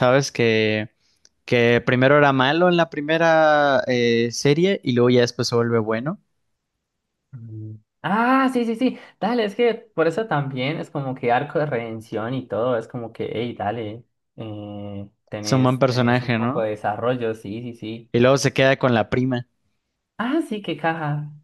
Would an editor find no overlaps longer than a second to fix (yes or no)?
no